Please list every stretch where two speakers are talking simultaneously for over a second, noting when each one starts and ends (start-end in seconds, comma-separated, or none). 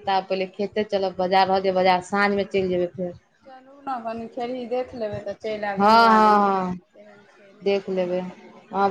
none